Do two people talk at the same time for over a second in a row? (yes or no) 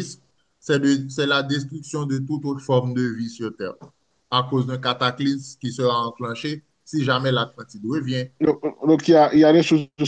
no